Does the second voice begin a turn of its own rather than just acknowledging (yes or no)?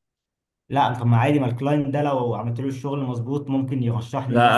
yes